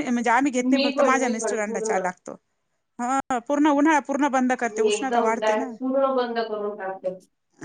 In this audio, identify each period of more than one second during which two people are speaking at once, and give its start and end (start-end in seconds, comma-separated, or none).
0.7-2.0